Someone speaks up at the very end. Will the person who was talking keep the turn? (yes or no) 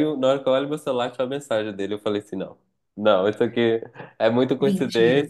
yes